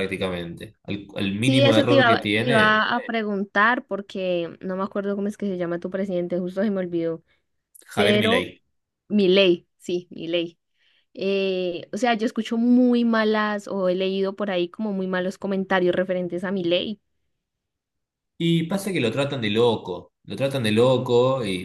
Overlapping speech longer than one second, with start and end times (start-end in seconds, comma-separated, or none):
1.4-2.8